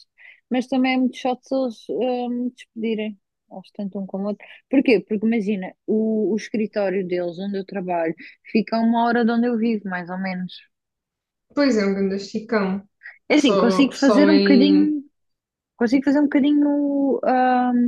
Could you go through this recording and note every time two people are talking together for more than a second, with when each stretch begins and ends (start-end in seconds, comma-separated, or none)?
13.3-14.9